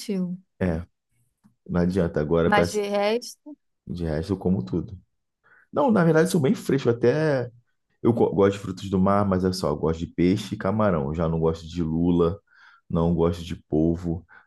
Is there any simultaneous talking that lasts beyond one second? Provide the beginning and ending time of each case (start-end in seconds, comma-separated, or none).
none